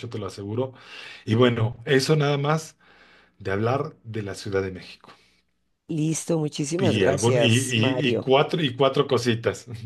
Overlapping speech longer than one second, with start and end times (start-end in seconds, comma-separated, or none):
6.8-8.3